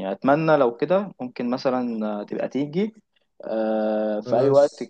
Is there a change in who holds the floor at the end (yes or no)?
no